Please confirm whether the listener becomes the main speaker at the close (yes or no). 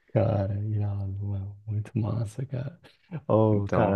no